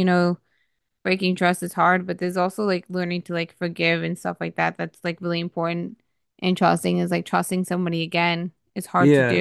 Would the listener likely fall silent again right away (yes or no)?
no